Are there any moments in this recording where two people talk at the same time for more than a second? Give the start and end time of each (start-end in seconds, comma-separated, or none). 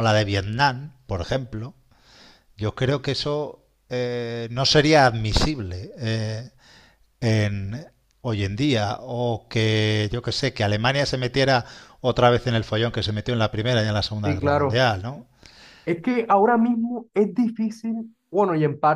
none